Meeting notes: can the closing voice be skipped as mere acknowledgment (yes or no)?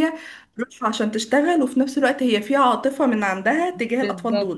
no